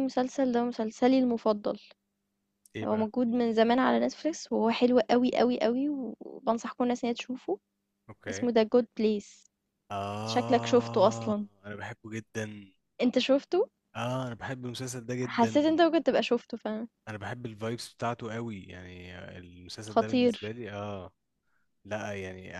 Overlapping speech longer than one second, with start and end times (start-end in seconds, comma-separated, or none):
10.3-11.5